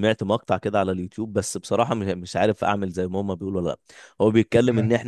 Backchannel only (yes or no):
yes